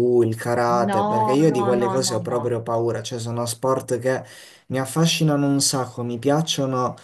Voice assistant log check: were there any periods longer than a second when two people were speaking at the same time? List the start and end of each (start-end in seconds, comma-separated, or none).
0.9-2.4